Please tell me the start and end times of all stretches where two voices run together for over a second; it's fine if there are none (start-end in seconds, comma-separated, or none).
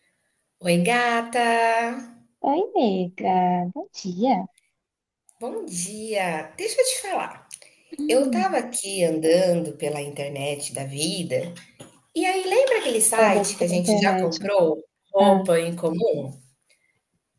13.2-14.5